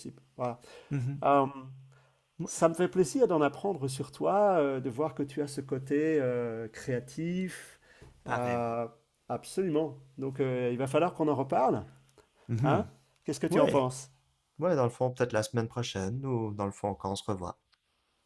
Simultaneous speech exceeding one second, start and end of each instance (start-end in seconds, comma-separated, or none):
none